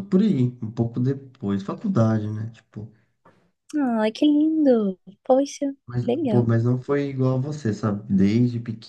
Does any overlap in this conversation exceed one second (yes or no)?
no